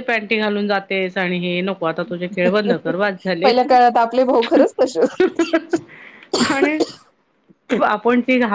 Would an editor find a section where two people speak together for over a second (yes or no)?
no